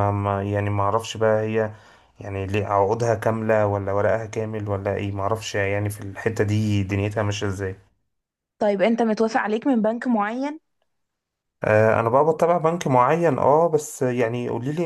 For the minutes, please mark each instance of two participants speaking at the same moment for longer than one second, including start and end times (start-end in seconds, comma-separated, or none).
none